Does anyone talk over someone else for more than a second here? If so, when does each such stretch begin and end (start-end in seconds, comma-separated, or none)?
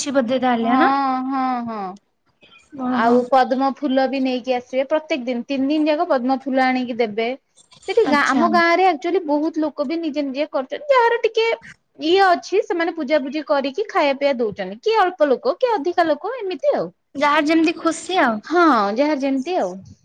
none